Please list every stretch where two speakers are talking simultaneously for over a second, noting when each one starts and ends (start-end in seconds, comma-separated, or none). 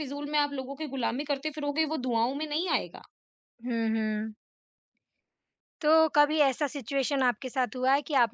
none